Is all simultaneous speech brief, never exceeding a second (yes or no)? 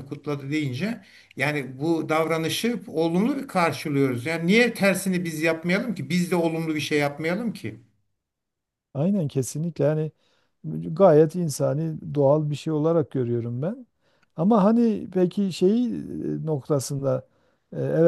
yes